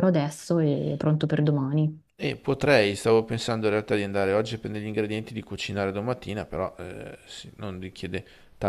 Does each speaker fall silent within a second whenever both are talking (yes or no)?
yes